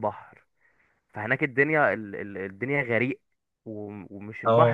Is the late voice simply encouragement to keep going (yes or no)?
yes